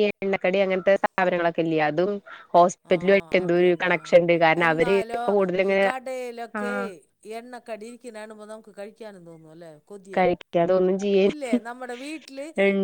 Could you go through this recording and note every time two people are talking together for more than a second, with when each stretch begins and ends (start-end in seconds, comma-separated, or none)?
none